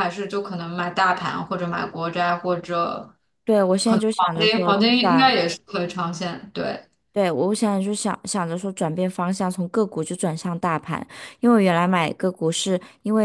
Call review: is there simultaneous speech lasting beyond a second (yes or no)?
yes